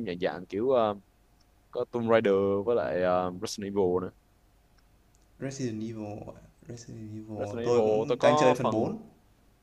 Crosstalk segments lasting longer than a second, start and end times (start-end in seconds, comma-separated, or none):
7.4-8.9